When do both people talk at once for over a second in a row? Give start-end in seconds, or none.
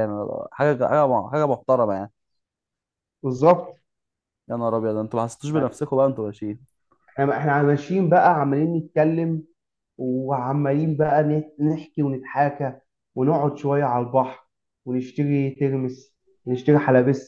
none